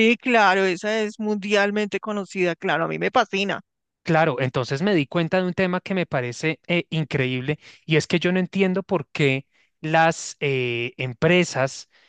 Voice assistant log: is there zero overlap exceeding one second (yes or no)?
yes